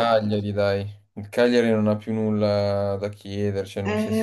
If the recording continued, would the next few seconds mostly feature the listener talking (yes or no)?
yes